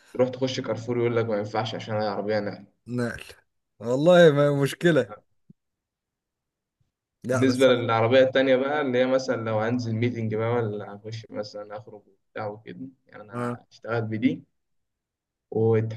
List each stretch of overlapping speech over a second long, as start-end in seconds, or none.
none